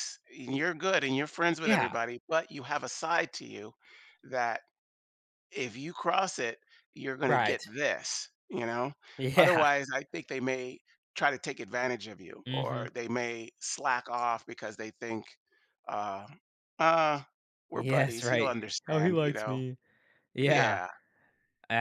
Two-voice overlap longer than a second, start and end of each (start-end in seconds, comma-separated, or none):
17.7-19.6